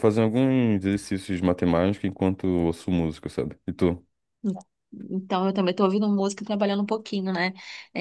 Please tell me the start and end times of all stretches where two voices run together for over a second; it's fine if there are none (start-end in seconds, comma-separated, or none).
none